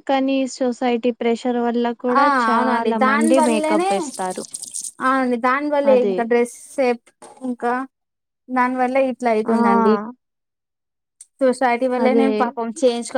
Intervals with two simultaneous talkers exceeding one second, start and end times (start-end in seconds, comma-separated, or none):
2.2-4.0